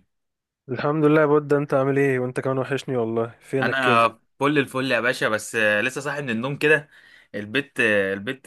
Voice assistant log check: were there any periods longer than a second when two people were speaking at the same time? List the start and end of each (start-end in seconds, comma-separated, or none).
none